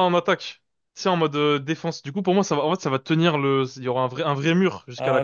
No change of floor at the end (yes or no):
no